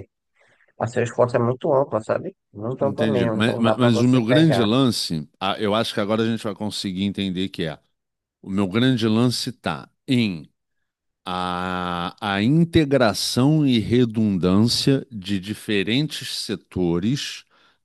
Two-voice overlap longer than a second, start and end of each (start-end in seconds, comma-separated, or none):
2.8-4.7